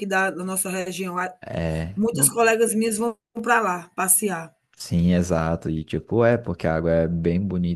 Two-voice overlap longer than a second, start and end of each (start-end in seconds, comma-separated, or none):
none